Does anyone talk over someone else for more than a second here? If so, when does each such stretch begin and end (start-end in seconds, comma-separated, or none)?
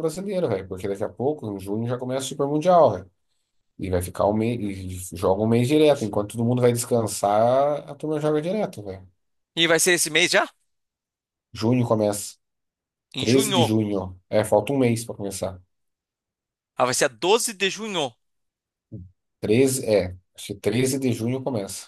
none